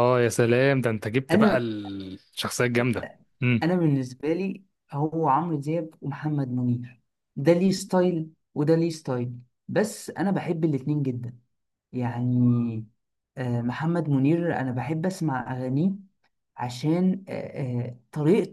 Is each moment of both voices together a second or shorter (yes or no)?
yes